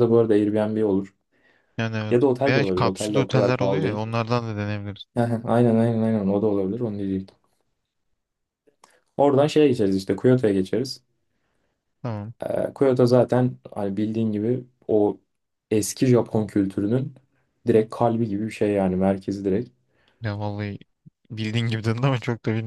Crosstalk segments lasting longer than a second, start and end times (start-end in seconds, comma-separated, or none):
2.1-4.1